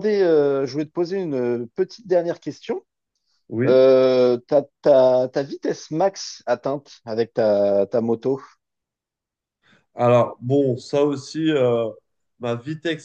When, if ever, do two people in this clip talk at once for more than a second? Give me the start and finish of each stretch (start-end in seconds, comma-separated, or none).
none